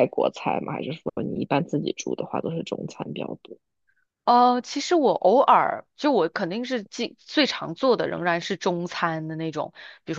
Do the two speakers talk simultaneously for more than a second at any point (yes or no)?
no